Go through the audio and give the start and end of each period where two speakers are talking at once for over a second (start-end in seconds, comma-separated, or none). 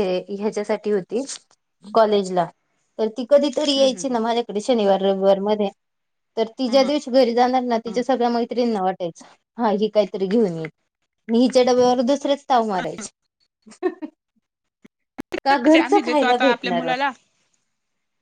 15.6-16.9